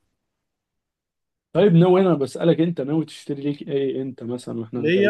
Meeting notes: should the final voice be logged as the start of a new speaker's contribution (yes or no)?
yes